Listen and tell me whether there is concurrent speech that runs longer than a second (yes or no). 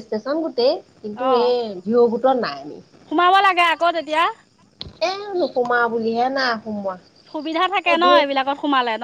no